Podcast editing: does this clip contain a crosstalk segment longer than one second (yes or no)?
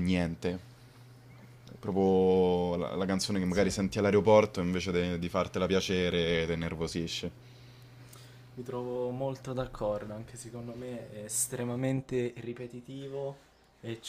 no